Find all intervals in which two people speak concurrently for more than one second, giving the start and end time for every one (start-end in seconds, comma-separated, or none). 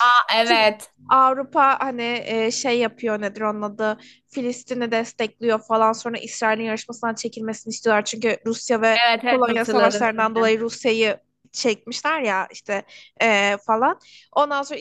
9.1-10.5